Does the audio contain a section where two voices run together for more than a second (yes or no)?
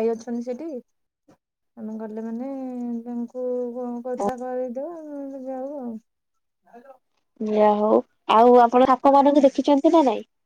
no